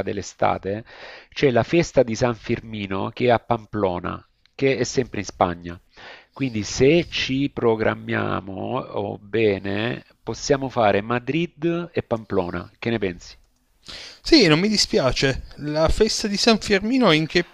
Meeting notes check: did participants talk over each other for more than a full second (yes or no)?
no